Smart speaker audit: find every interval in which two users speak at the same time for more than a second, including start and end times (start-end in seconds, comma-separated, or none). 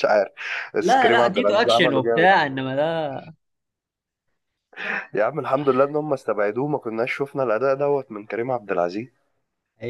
0.8-2.3